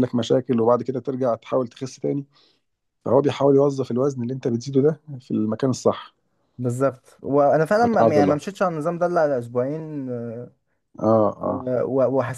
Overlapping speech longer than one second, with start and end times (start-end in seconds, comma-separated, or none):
none